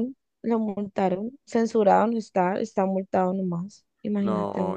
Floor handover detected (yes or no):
yes